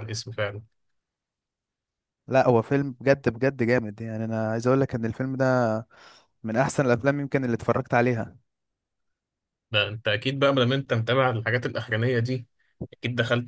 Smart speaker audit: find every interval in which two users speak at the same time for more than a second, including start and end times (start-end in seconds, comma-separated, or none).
none